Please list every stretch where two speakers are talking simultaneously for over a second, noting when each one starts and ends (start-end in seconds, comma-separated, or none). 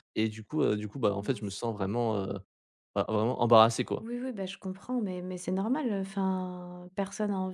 none